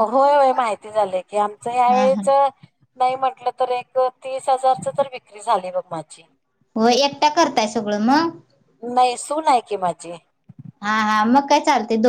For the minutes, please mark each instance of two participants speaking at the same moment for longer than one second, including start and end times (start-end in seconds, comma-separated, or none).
none